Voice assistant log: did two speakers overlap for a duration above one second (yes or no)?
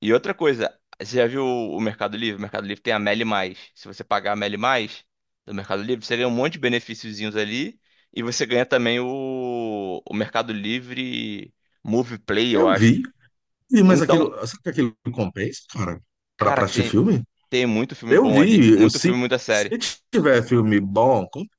yes